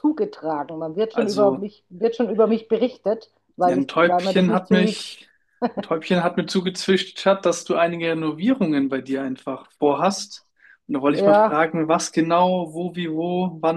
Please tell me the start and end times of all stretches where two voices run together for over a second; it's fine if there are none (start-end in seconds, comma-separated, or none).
3.6-5.1